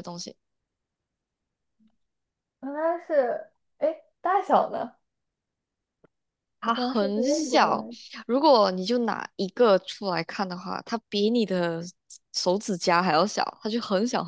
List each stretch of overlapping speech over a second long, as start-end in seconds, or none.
6.6-7.9